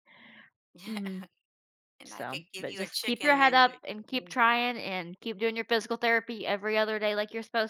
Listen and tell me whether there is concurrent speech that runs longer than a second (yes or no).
yes